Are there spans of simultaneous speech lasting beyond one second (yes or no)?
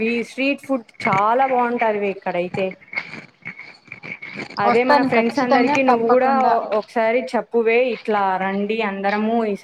yes